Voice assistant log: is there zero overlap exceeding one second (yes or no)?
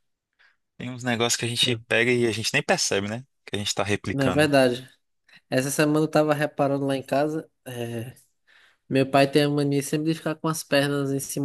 yes